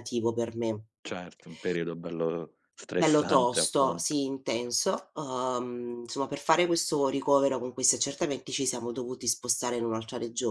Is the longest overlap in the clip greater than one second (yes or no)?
yes